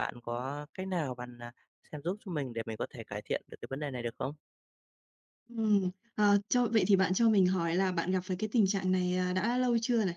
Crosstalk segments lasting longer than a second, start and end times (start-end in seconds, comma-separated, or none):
none